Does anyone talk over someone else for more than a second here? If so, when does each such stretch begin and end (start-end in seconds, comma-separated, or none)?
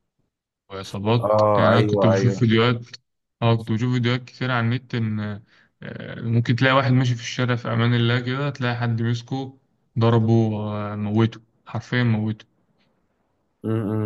1.2-2.4